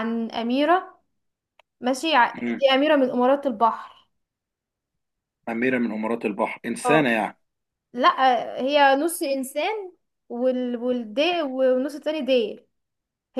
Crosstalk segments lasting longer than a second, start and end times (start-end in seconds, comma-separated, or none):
none